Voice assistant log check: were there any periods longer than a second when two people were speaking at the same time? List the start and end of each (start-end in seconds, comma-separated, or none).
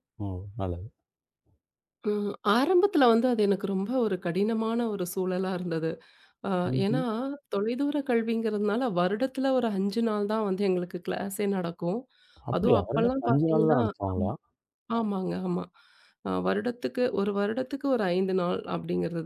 12.6-13.8